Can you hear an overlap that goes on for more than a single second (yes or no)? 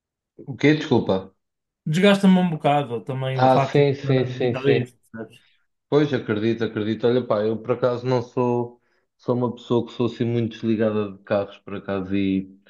yes